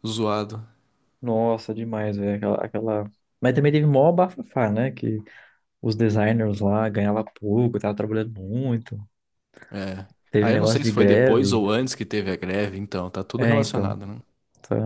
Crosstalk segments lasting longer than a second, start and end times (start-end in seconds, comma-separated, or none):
10.3-11.6